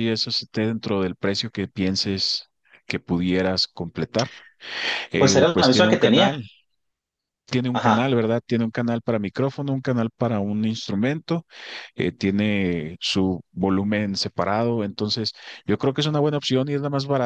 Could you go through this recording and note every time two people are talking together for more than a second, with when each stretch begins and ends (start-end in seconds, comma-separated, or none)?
5.2-6.4